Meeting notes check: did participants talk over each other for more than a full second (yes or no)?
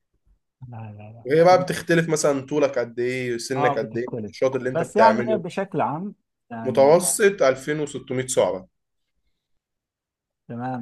yes